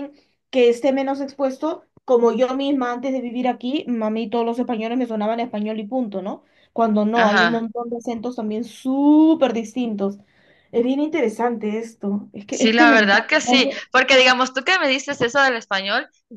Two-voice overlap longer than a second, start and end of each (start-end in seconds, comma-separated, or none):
12.5-13.8